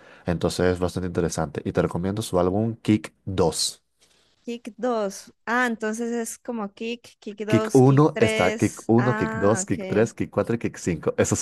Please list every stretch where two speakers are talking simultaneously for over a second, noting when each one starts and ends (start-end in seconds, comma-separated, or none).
7.5-10.1